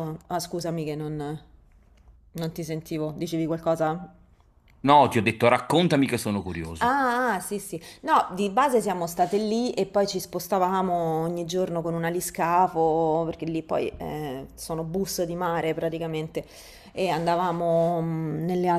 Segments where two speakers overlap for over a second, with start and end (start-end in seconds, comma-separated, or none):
none